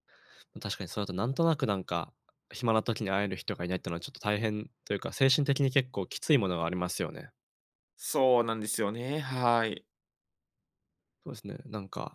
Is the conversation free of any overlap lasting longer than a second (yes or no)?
yes